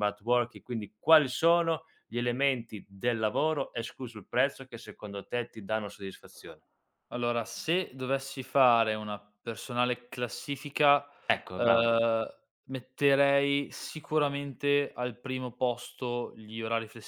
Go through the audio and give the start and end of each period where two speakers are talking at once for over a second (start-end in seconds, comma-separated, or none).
none